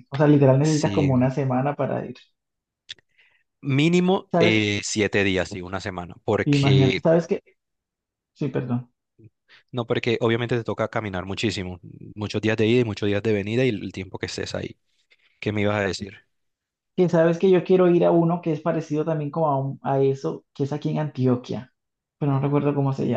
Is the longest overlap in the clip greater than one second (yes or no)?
no